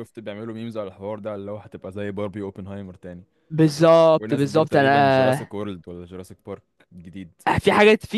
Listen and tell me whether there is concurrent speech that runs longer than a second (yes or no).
yes